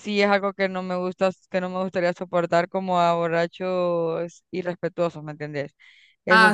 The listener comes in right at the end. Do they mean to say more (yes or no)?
yes